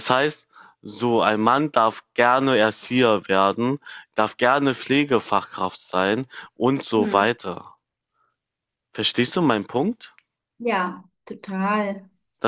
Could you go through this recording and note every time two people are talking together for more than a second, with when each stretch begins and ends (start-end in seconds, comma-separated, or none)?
none